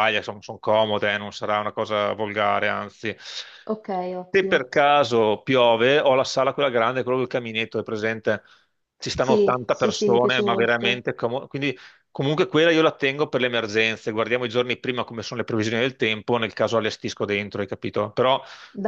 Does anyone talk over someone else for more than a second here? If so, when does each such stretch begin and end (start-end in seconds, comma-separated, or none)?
9.2-11.0